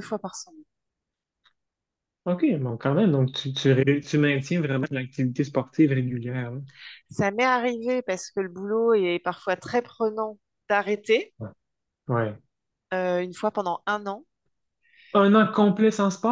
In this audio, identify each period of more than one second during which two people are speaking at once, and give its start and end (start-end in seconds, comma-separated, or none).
none